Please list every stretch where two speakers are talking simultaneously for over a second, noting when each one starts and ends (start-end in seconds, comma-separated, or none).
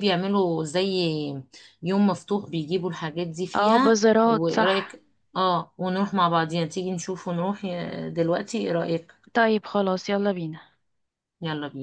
3.5-5.0